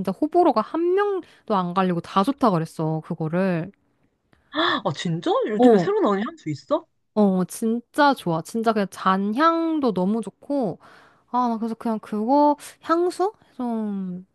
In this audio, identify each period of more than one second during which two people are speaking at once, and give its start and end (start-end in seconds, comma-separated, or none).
none